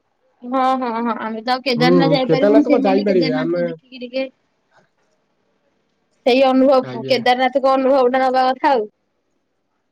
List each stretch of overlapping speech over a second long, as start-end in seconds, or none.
1.8-3.6